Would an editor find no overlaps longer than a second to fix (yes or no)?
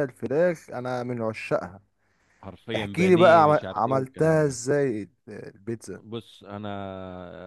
no